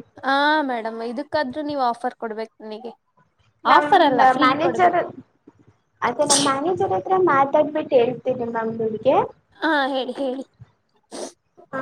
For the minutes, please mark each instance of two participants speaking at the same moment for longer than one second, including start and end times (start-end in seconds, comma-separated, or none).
none